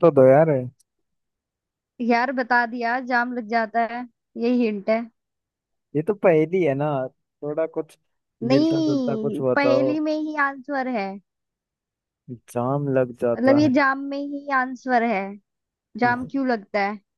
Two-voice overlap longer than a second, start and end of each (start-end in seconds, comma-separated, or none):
8.5-9.9